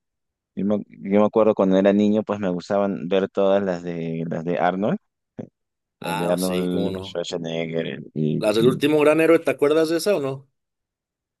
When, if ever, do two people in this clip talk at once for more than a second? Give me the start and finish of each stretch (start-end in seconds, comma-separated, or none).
6.0-7.2